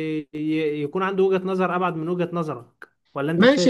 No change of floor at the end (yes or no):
no